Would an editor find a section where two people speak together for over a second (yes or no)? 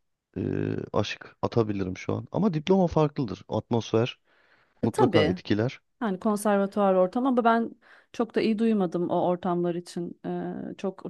no